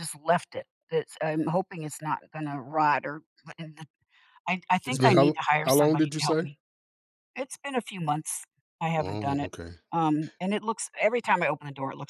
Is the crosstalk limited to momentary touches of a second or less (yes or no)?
no